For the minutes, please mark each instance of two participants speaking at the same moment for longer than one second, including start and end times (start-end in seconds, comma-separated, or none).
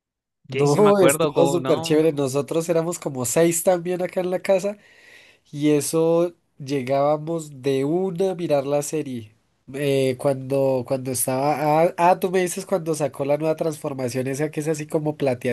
0.5-2.0